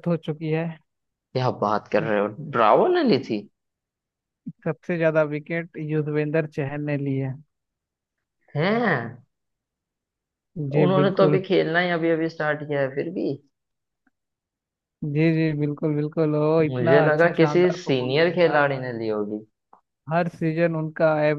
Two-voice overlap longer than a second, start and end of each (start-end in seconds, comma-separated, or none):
16.7-18.1